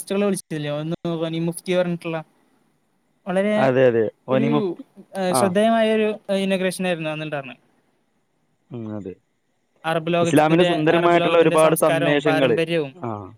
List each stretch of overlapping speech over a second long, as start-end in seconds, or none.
10.2-12.6